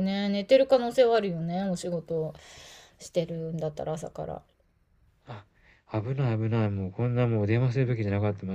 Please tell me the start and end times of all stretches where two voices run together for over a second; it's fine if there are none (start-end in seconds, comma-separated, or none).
none